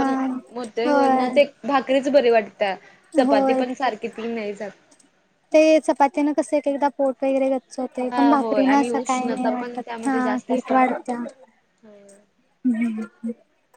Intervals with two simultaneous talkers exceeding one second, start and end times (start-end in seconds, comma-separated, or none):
8.1-11.0